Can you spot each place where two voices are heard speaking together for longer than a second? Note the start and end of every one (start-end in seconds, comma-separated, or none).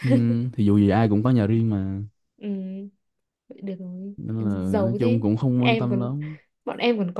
4.6-6.1